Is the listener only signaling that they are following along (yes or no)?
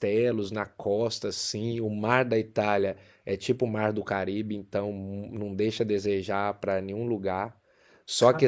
yes